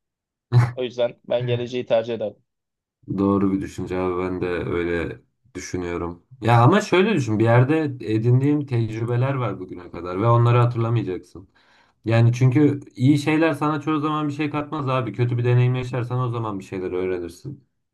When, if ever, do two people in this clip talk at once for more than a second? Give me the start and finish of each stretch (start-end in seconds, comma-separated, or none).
none